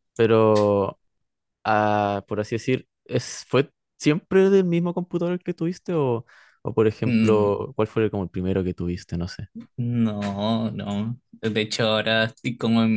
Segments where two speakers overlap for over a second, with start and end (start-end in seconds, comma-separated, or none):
none